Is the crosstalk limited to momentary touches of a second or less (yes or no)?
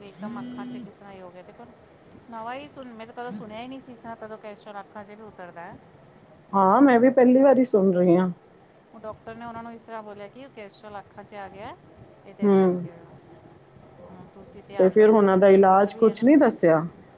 no